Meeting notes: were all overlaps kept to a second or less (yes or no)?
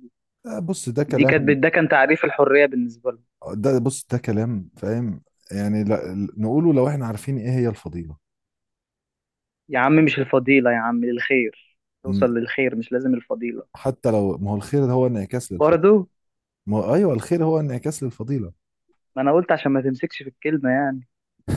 yes